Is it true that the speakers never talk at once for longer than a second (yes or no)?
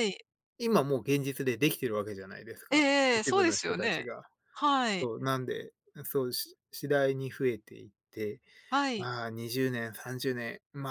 no